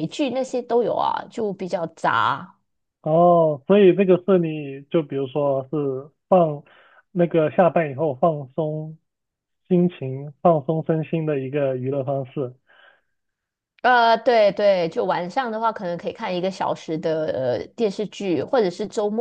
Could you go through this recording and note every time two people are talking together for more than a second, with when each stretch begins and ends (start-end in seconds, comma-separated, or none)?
none